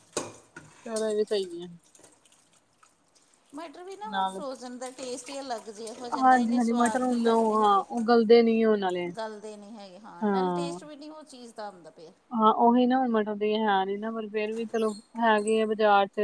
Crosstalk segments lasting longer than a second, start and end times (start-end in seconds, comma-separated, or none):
6.2-7.8